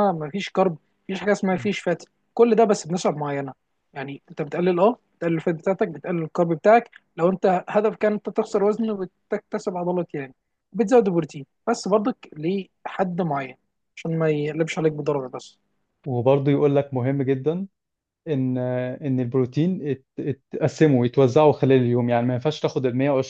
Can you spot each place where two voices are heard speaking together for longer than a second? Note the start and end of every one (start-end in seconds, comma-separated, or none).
none